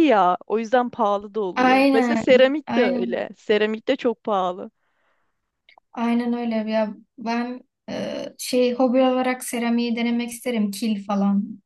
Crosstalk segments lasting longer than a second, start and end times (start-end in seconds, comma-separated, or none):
1.6-3.3